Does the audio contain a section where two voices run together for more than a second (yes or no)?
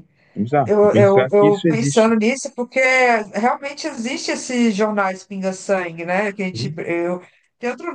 yes